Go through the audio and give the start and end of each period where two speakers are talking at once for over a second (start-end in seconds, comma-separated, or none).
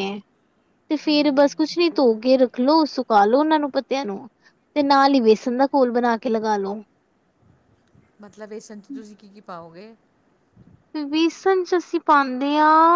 none